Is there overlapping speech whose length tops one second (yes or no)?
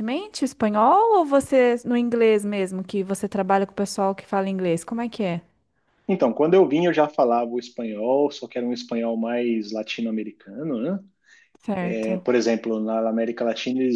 no